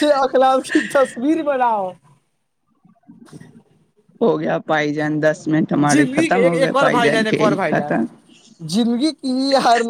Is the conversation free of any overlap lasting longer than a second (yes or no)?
no